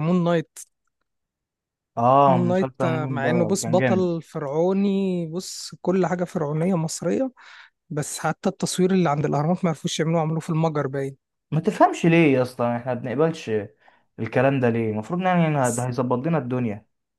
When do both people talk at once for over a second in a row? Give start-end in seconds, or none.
2.2-4.1